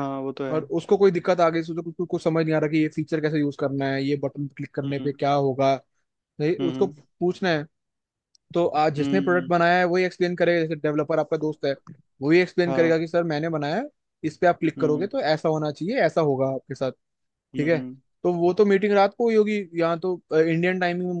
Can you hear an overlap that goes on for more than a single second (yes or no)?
no